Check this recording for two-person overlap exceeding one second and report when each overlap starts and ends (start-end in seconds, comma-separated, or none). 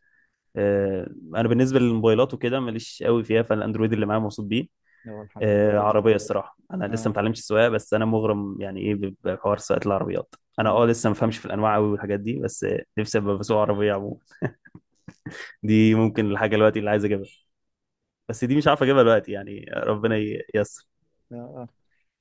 none